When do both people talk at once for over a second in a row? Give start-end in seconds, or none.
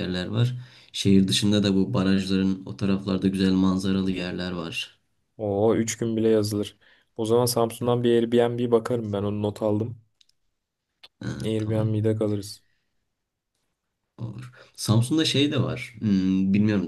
none